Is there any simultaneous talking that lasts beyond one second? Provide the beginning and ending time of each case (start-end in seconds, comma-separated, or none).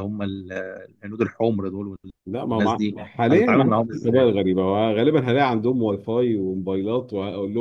2.5-4.3